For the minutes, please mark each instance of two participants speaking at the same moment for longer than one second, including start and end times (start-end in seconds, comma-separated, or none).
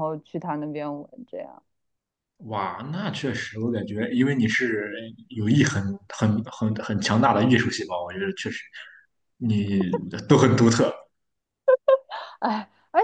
none